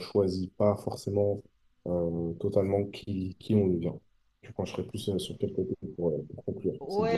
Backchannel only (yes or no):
no